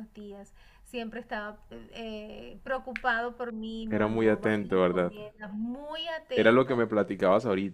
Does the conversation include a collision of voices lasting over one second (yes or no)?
yes